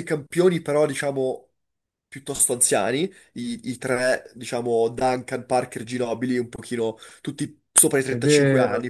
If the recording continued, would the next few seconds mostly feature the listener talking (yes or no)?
yes